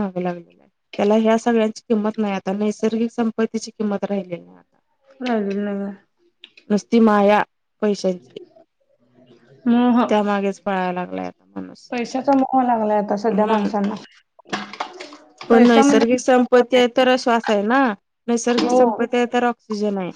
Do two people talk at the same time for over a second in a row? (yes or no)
yes